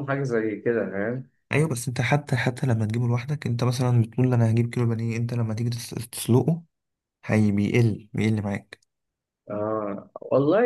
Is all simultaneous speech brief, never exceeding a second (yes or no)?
yes